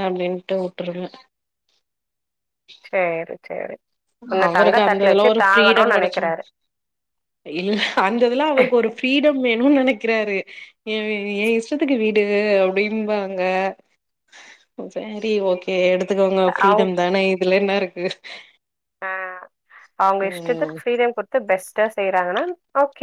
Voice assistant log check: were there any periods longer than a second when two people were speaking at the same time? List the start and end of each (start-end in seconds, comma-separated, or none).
4.5-6.3